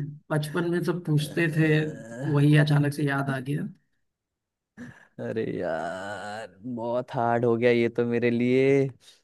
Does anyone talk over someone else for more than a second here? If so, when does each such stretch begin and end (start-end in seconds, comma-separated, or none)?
none